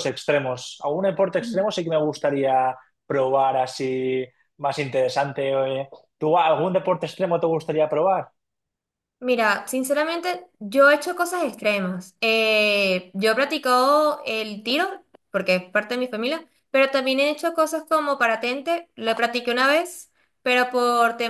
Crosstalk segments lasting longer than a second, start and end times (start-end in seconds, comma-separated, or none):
none